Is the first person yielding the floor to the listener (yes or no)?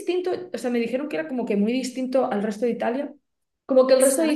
no